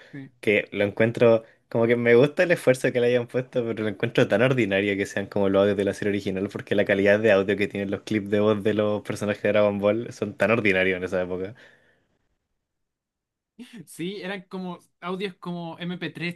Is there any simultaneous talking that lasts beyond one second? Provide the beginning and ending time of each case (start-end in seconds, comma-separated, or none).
none